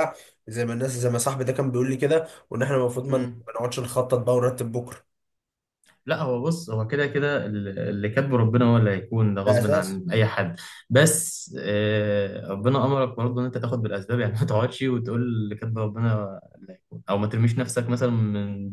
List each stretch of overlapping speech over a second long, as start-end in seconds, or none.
none